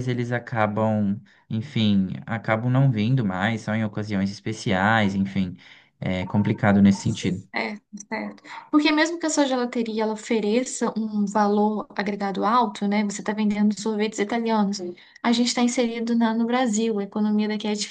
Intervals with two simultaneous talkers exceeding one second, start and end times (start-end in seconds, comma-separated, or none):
none